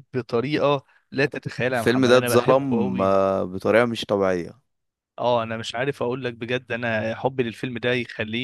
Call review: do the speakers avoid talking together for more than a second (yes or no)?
no